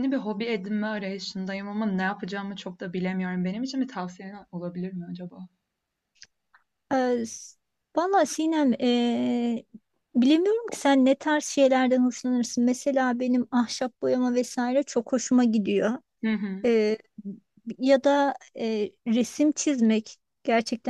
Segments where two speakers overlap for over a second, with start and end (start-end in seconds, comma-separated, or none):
none